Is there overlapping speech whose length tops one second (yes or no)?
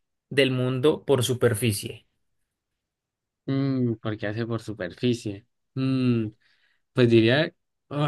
no